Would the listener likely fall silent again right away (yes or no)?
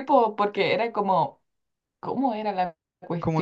no